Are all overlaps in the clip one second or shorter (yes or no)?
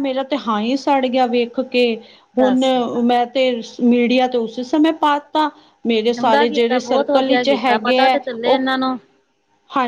no